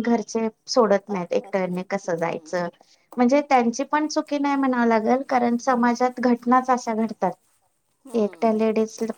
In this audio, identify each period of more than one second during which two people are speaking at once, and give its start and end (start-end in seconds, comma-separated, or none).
1.1-2.6